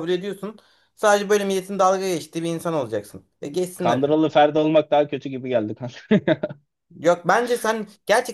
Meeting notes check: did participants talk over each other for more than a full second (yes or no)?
no